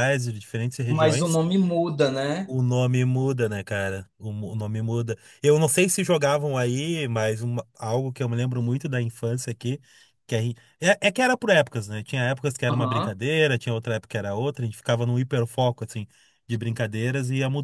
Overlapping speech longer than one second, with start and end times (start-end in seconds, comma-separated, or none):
none